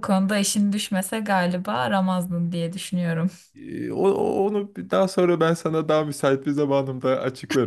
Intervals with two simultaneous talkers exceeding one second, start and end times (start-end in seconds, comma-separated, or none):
none